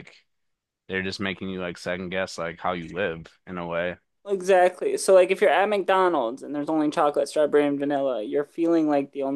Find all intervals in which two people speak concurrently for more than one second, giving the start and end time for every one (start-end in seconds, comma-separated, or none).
none